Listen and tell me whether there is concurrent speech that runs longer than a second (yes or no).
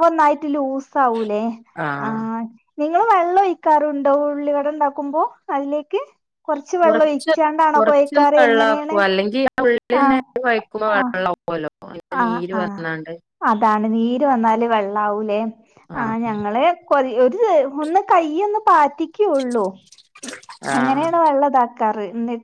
no